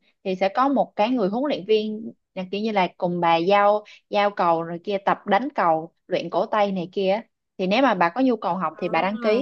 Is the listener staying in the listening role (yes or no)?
yes